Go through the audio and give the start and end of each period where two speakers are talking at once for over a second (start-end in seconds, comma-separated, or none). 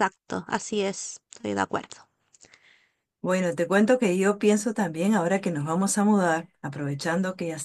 none